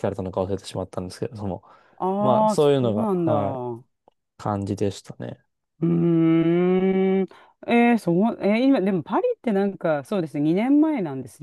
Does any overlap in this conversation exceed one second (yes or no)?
yes